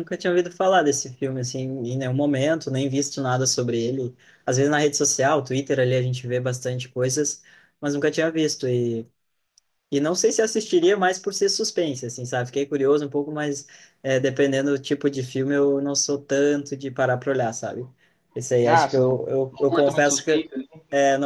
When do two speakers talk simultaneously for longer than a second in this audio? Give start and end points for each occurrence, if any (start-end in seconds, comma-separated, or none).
18.7-20.4